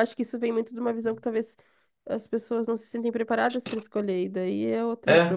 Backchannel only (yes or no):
no